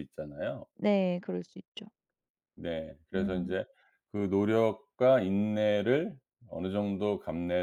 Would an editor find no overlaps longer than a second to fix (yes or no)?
yes